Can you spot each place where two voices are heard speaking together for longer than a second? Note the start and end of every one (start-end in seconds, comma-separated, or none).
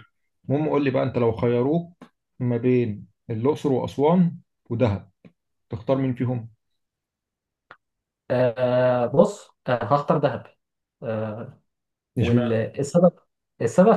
none